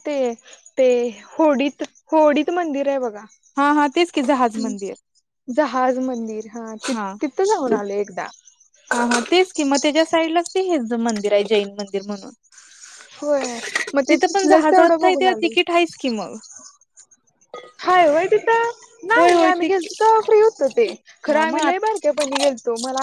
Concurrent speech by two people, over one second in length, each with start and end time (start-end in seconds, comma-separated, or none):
14.1-15.5